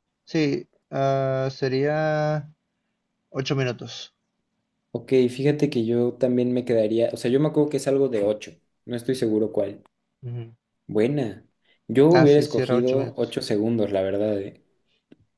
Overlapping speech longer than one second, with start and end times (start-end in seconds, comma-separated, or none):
12.1-13.3